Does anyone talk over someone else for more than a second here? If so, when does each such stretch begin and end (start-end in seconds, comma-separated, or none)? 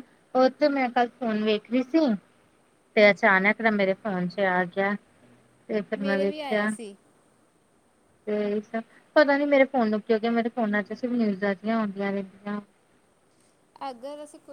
none